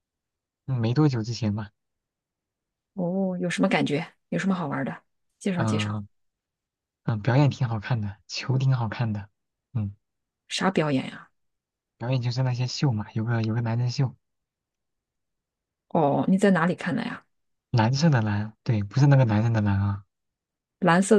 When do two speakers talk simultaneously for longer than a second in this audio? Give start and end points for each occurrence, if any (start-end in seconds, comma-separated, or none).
none